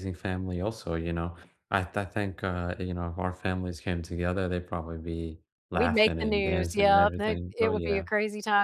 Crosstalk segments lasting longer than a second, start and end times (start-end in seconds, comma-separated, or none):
5.7-8.1